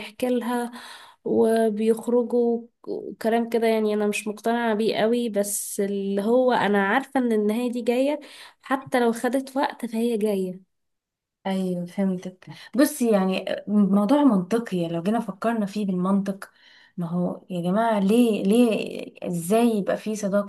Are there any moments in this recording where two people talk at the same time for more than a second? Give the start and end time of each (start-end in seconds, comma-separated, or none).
none